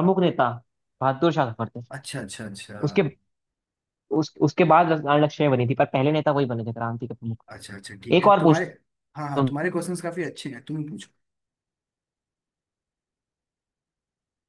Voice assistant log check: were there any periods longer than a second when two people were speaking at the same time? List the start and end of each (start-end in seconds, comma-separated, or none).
none